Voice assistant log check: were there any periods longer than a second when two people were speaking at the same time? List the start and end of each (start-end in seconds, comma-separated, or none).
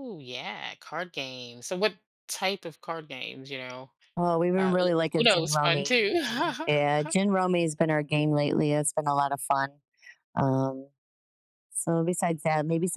4.6-6.0